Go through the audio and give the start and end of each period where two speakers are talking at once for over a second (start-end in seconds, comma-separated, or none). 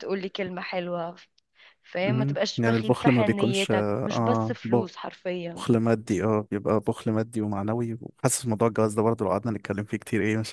2.0-5.1